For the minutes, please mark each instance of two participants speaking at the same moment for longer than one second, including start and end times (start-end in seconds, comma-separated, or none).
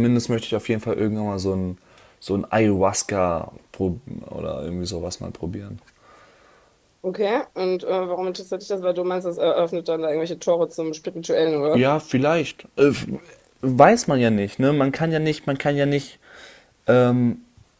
none